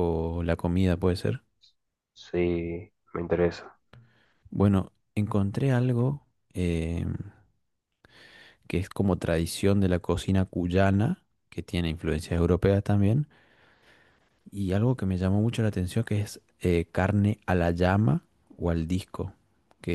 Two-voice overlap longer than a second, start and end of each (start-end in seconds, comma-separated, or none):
none